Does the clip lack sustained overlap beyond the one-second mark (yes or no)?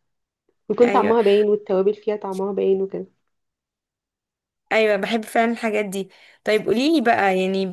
yes